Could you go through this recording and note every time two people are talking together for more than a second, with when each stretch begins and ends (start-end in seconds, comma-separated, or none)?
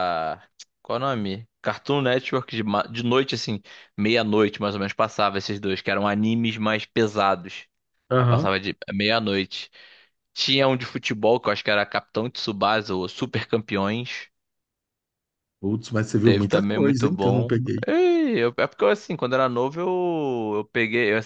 16.2-17.8